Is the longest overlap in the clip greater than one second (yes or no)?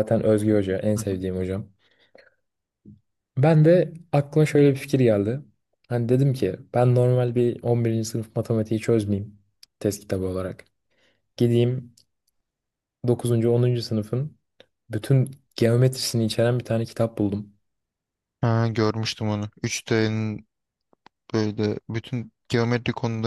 no